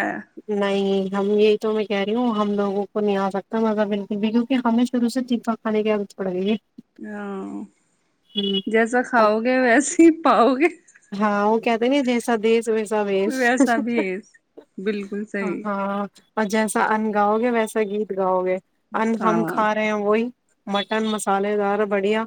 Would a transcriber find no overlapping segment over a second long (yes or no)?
yes